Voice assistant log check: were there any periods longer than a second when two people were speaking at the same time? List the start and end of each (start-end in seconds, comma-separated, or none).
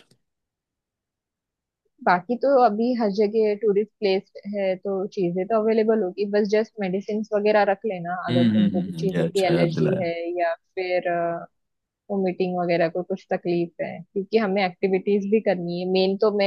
8.3-10.1